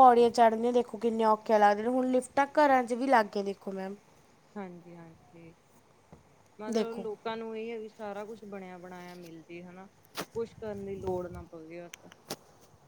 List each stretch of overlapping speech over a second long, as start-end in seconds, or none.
none